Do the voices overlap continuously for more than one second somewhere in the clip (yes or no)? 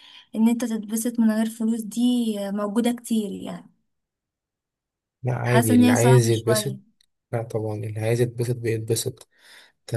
yes